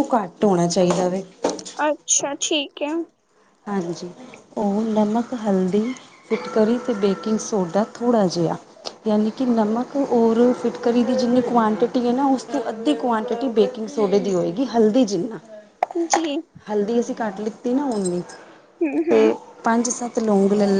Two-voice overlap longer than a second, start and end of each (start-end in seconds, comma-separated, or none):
none